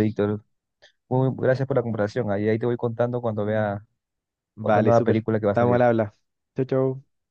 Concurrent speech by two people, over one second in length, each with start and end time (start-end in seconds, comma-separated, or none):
4.6-5.8